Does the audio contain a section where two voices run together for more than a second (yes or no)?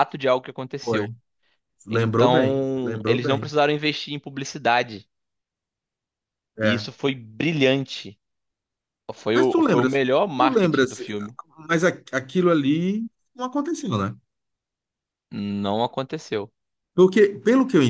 yes